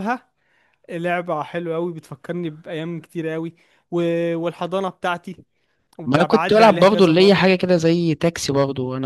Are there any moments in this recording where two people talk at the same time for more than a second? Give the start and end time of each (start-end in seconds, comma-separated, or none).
6.0-7.5